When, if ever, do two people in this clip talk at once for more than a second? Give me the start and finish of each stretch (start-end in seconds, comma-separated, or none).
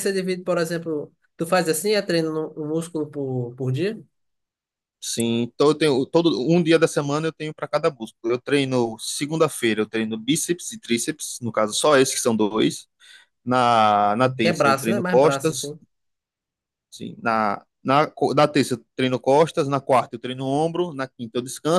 14.4-15.7